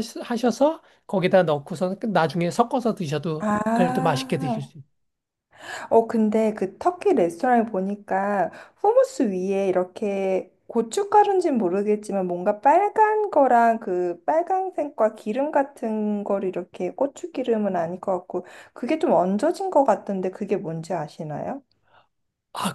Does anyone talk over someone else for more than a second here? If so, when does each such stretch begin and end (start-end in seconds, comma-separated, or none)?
3.4-4.7